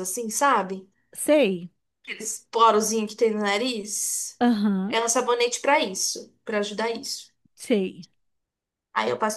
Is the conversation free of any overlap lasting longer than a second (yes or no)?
yes